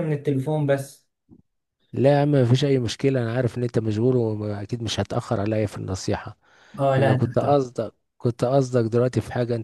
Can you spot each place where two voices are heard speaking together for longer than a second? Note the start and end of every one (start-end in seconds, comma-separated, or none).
none